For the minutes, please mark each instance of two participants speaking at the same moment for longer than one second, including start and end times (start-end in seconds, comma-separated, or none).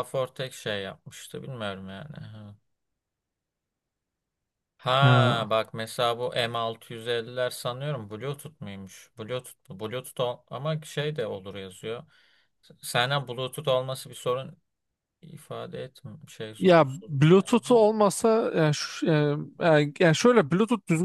16.6-17.9